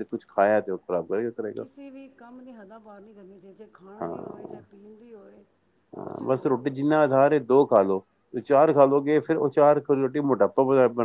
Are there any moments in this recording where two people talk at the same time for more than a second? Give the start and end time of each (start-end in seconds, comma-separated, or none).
none